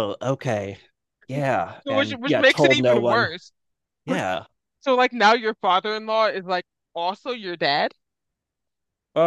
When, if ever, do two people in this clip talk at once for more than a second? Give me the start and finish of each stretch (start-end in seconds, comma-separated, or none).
1.8-3.3